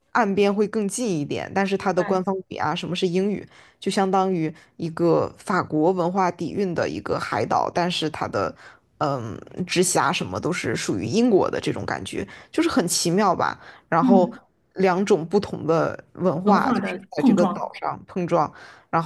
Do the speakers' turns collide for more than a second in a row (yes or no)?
yes